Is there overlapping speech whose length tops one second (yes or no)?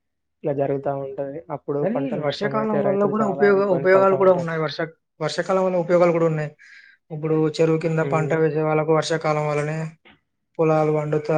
yes